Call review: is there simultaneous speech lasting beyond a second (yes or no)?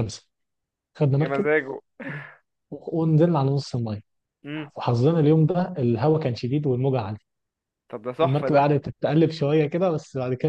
no